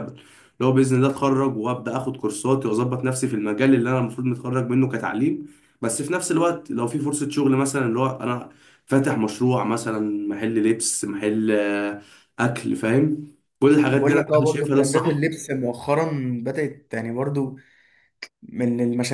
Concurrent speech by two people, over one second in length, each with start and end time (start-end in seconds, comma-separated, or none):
13.9-15.3